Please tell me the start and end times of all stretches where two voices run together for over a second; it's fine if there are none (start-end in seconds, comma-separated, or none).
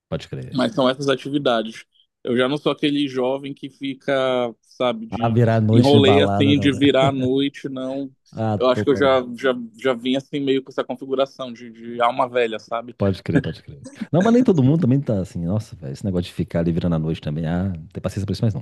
5.1-6.8